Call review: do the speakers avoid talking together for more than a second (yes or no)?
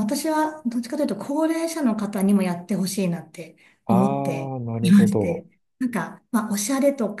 no